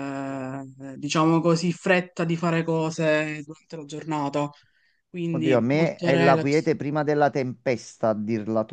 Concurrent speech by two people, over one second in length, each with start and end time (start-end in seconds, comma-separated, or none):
5.3-6.7